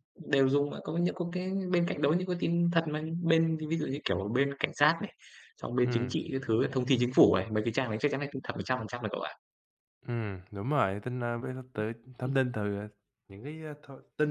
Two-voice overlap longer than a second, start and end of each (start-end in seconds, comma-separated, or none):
none